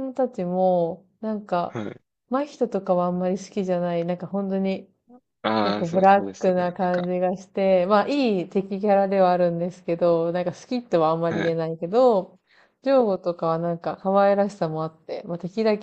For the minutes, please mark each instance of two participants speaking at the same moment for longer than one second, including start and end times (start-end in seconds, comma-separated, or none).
5.6-7.1